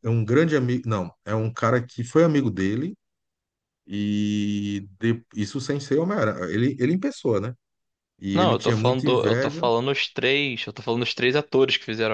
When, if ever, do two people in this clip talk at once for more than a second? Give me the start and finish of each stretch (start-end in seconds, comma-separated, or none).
8.3-9.7